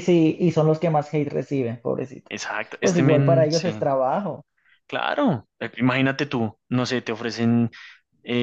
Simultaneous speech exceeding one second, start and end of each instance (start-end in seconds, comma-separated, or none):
2.3-3.7